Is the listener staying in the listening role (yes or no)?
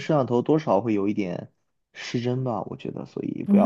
no